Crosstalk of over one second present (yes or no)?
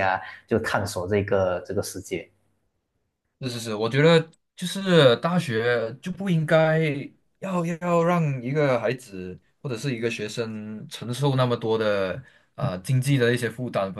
no